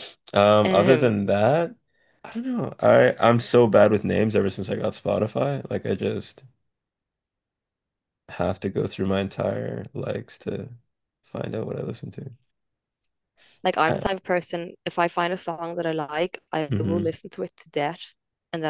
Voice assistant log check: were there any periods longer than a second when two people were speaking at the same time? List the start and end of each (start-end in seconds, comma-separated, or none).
none